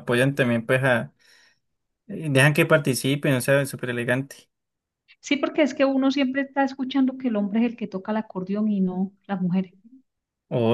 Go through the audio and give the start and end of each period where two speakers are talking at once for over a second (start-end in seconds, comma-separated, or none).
none